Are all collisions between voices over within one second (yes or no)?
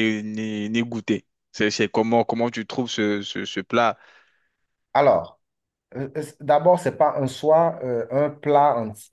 yes